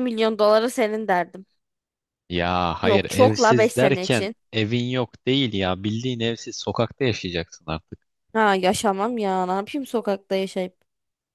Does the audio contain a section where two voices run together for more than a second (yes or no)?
yes